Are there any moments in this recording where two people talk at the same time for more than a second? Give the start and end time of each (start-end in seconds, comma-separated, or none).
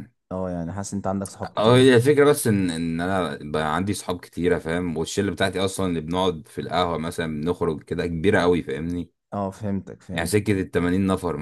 none